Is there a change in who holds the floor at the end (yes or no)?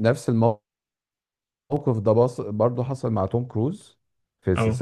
no